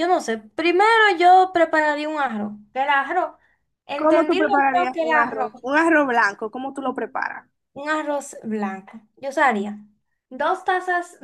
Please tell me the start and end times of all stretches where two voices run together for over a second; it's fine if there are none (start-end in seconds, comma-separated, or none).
4.0-5.5